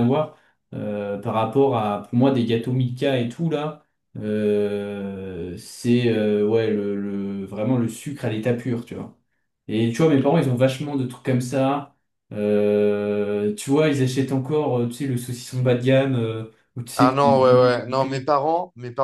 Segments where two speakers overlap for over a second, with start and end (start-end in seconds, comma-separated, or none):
17.0-18.3